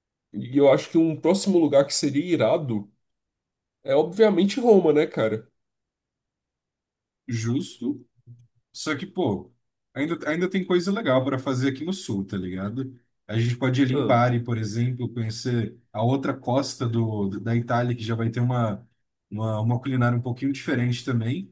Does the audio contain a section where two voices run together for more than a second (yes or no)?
no